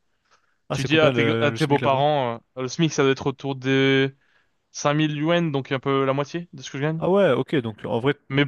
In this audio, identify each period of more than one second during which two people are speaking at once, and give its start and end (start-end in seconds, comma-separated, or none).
0.7-2.0